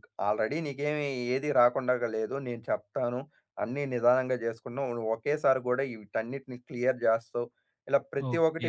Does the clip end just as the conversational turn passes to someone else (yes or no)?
yes